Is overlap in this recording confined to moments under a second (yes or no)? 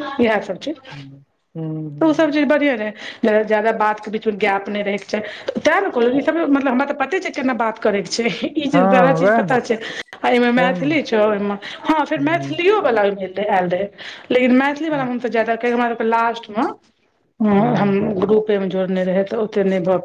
yes